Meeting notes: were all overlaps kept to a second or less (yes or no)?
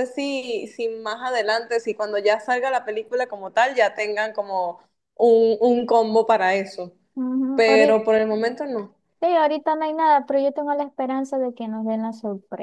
yes